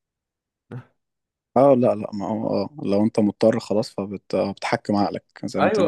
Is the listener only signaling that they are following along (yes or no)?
no